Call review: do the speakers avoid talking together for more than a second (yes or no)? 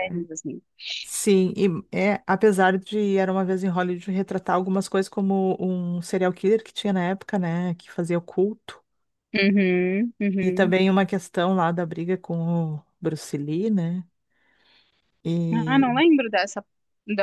yes